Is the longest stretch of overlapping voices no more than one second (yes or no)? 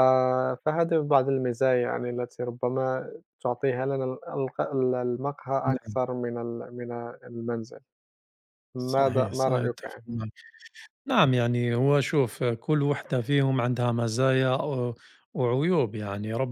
no